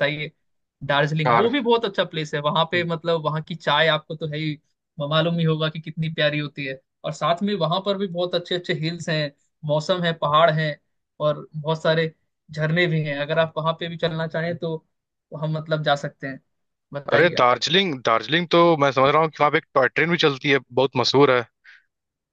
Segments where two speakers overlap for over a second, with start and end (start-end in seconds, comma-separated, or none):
none